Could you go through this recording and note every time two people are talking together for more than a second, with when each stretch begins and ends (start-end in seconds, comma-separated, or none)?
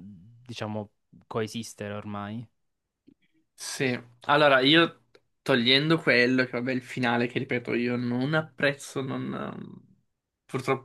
none